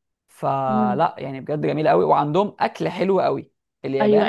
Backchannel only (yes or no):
no